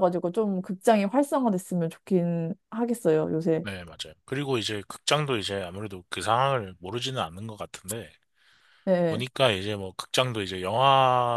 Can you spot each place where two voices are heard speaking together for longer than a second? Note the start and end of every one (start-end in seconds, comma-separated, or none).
none